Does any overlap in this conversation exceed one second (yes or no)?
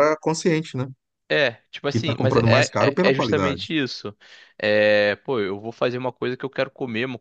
yes